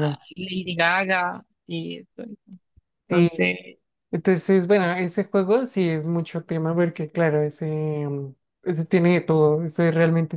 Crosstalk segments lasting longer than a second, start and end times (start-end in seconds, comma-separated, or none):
none